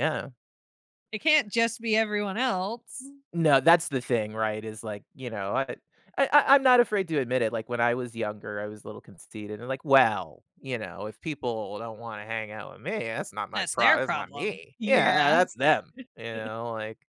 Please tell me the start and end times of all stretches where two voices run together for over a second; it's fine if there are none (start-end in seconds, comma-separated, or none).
13.5-15.3